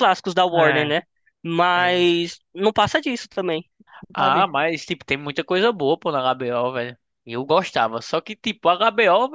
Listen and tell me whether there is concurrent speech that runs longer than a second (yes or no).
no